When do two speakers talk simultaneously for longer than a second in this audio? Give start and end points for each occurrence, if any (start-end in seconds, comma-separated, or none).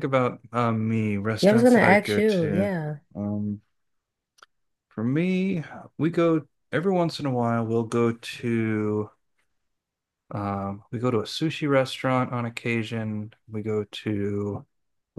1.4-2.7